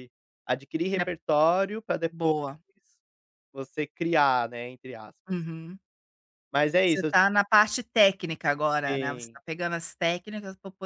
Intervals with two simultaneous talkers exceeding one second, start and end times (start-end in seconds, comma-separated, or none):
none